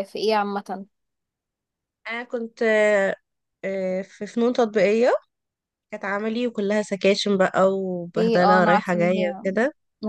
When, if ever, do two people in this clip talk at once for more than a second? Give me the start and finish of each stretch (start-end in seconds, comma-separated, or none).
8.2-9.4